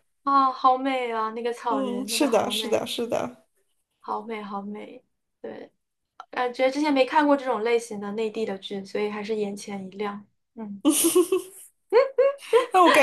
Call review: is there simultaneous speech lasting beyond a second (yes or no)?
yes